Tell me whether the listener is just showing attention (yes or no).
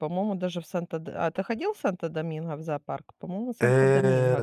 no